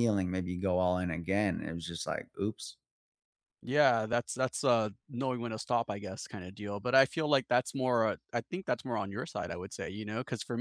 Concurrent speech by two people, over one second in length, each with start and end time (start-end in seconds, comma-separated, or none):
none